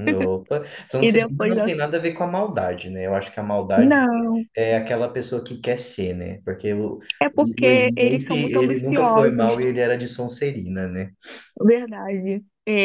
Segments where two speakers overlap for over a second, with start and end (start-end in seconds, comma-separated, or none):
7.6-9.7